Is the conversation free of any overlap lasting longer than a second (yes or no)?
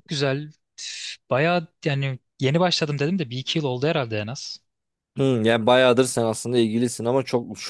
yes